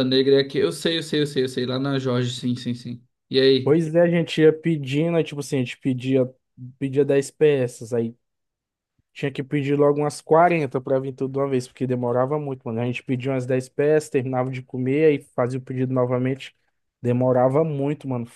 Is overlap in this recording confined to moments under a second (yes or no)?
yes